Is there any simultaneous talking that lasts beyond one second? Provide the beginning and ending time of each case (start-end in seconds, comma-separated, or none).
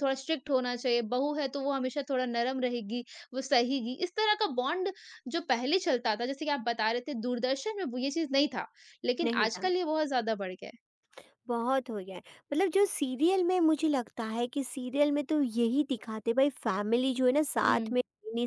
none